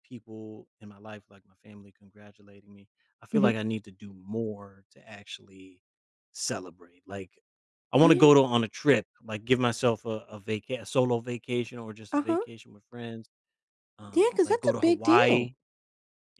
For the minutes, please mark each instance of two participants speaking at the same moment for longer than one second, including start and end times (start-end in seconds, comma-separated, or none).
14.1-15.5